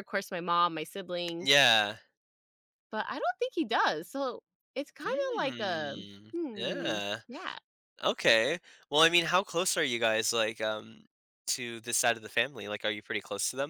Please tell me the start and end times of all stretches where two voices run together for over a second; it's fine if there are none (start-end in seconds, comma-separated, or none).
5.0-7.2